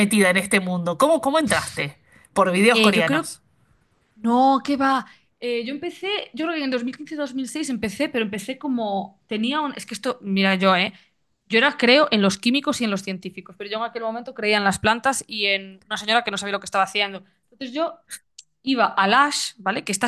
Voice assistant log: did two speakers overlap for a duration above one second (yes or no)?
no